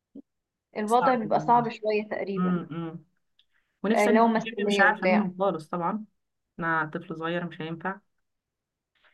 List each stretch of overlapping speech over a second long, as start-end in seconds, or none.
3.9-5.3